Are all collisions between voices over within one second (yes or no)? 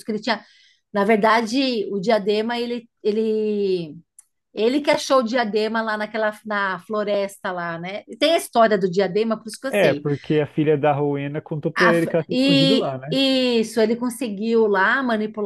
no